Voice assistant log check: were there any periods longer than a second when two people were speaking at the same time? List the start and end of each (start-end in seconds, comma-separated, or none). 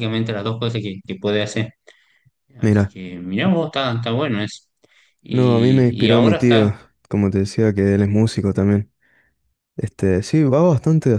5.3-6.7